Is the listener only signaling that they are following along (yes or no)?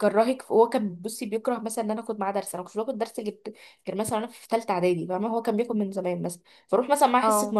yes